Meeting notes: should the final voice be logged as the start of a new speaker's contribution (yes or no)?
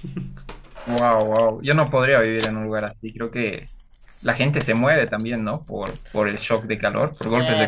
yes